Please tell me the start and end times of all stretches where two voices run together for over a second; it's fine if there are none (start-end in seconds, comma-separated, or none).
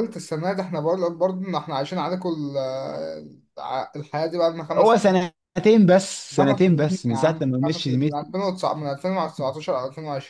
6.4-8.0